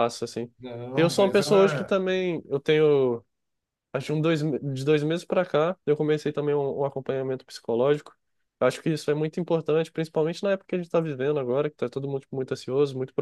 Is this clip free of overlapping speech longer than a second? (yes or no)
no